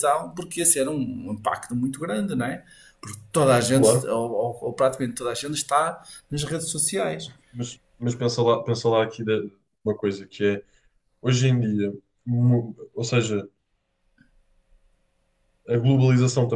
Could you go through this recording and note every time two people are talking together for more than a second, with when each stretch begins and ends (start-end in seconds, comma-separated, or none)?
none